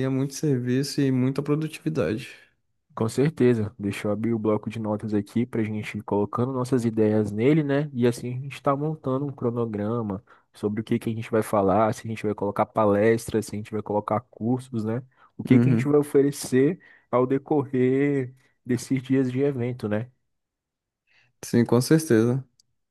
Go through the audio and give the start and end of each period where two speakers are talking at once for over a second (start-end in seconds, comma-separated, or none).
none